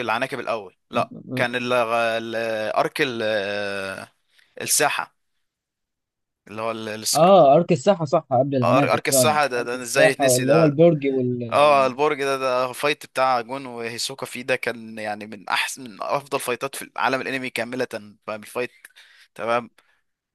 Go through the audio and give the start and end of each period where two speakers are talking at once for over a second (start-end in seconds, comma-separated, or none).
8.6-10.8